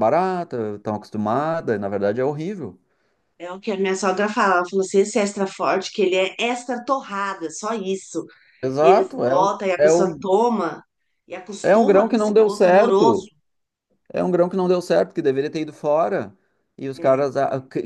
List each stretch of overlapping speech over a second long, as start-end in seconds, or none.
8.8-10.2, 11.6-13.3